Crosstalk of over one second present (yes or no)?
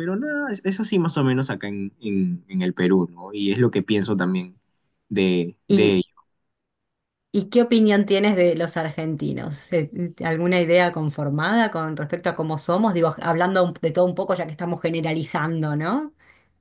no